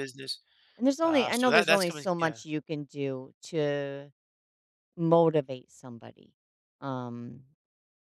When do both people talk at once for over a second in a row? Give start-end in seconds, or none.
1.1-2.4